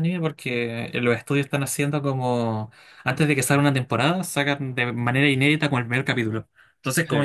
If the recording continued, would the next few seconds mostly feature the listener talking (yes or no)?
no